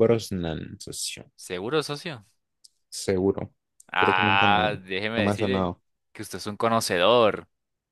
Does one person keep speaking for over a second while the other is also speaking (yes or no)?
yes